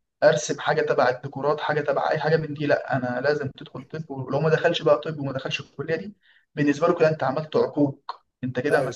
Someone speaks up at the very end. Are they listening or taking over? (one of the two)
listening